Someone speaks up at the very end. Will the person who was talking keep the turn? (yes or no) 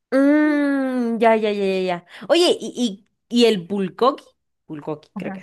no